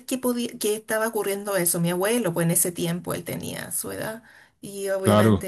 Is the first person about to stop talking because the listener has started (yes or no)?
no